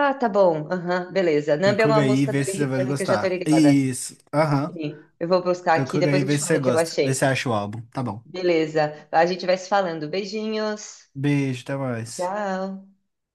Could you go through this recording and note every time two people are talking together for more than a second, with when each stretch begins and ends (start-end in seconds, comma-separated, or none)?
1.6-3.8, 5.7-7.3